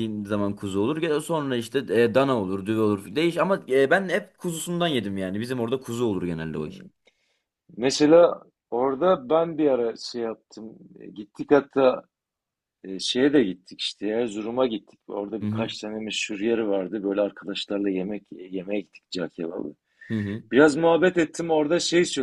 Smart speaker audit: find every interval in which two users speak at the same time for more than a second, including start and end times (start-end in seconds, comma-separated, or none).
none